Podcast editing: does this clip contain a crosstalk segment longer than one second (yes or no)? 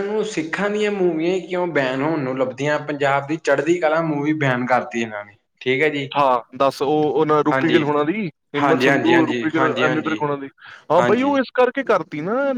yes